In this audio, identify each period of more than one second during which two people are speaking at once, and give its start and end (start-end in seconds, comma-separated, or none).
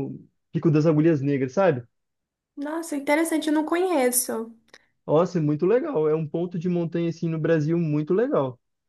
none